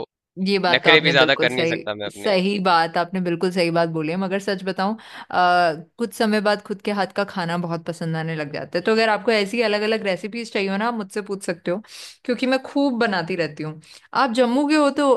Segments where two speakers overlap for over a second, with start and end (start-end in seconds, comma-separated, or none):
0.7-2.3